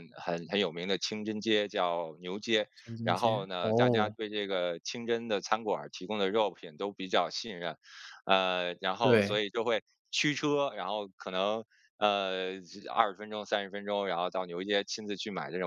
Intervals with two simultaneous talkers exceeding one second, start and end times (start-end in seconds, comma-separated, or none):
2.8-4.2